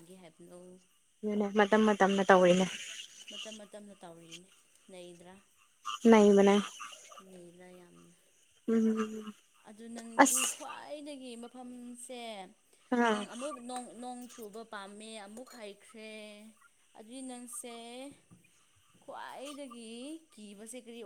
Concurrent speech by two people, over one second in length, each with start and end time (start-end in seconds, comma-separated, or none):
none